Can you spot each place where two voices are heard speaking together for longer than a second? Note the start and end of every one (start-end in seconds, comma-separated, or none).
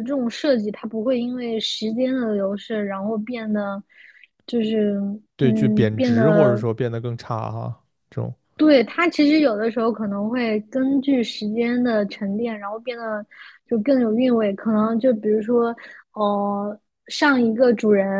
5.4-6.6